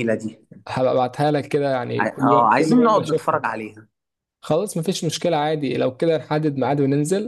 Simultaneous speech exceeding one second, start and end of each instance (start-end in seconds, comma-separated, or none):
2.0-3.4